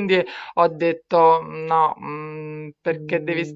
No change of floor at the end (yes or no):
yes